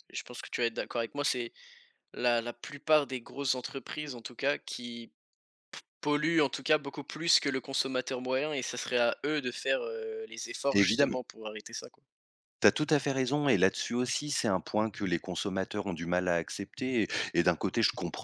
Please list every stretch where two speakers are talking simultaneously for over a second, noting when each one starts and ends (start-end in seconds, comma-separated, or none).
none